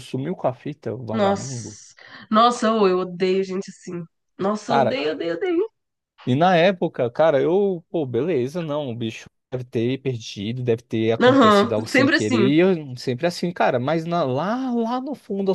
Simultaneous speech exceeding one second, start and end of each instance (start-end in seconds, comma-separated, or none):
11.2-12.5